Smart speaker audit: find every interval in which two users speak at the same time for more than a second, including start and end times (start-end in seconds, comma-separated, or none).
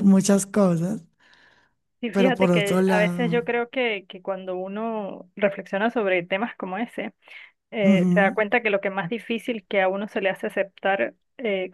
2.1-3.5